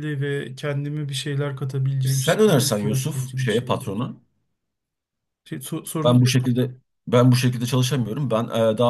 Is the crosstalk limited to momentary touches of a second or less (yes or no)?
no